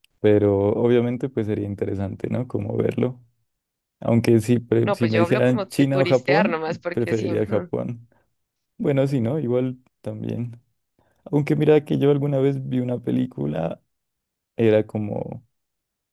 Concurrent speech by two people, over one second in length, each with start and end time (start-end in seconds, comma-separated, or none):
4.8-7.7